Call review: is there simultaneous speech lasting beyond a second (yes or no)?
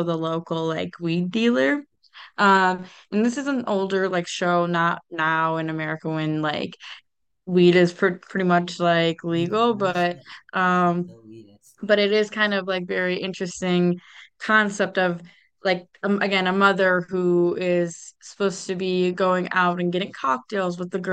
yes